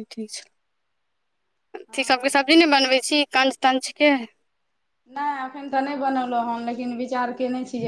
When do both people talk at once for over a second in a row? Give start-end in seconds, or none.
none